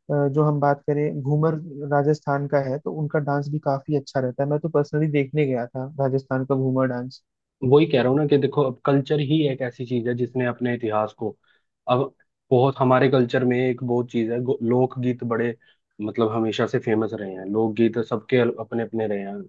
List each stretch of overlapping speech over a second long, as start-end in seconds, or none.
none